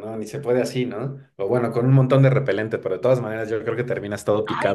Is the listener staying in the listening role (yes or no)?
no